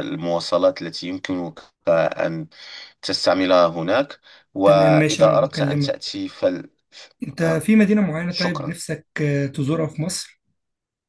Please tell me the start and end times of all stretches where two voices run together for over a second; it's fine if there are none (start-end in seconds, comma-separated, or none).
4.7-6.1